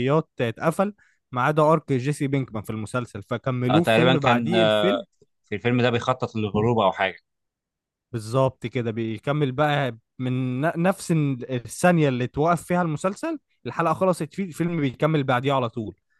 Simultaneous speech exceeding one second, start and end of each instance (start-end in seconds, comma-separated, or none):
3.7-4.9